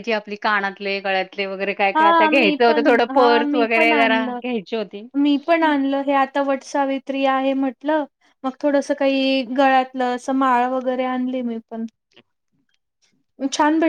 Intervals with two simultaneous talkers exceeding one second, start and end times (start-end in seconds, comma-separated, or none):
2.0-4.4